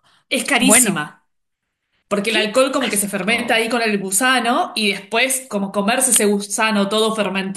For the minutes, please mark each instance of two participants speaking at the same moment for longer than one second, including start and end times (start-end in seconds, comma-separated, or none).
2.3-3.7